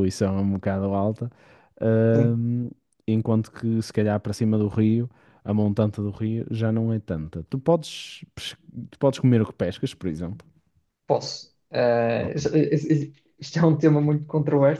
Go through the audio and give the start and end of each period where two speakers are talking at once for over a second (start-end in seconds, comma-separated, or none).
none